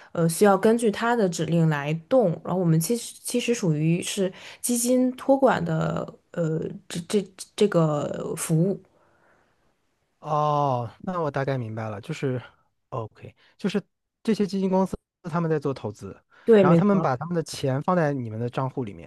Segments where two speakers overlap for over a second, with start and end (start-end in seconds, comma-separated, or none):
none